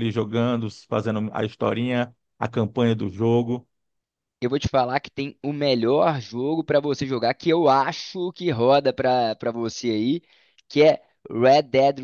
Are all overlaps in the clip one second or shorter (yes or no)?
yes